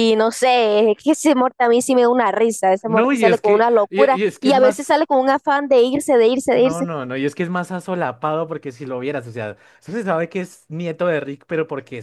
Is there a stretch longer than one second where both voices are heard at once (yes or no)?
yes